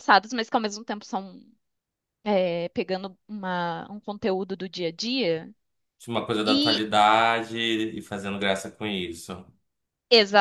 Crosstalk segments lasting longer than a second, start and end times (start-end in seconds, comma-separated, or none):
none